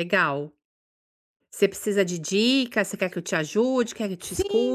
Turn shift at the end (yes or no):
yes